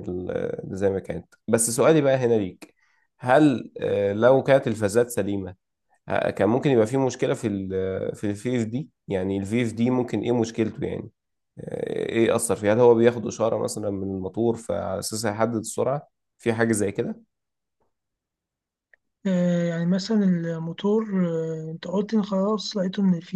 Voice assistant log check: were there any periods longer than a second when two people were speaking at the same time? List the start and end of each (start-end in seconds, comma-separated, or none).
none